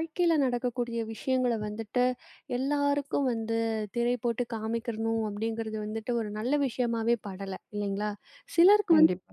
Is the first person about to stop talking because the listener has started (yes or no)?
no